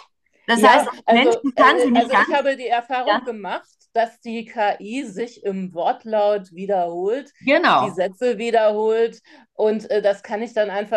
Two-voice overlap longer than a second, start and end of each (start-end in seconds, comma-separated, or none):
0.5-2.4